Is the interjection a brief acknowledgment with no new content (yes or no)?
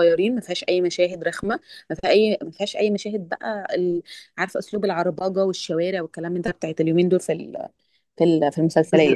no